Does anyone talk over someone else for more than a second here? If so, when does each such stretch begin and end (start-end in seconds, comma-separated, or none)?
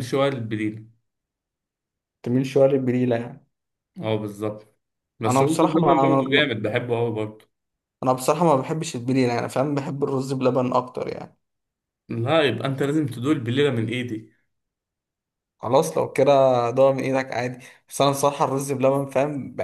5.2-6.5